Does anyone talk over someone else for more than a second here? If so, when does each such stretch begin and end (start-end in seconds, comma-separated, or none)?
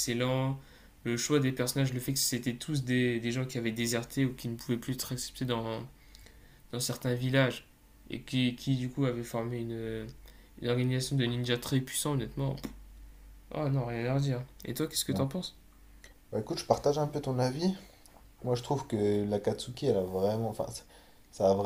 none